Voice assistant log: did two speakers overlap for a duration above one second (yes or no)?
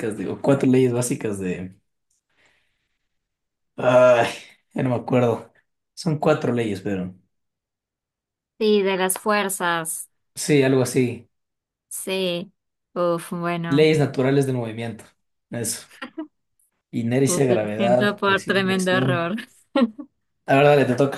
yes